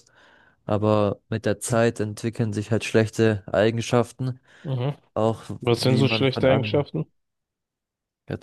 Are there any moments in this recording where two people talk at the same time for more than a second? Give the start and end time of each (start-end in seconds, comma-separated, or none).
5.6-6.9